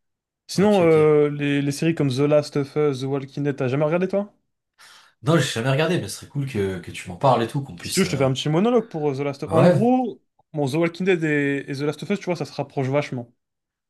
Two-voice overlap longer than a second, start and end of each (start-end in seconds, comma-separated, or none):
none